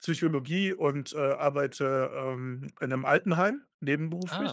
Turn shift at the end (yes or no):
no